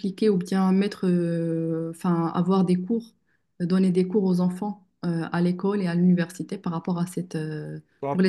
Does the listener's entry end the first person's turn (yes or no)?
yes